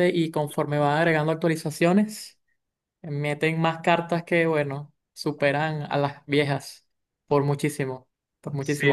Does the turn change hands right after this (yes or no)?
no